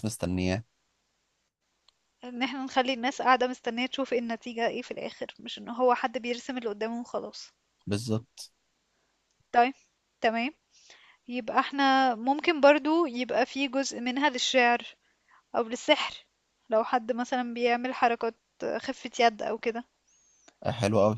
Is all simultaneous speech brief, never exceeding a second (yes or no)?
yes